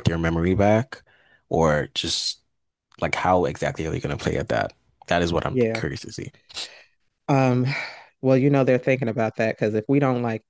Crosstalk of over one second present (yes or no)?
no